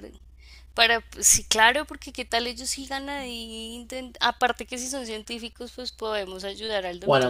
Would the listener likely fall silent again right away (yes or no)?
no